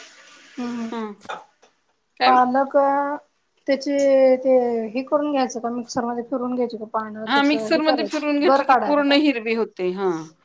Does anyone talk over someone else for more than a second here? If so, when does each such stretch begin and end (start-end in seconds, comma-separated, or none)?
7.3-9.1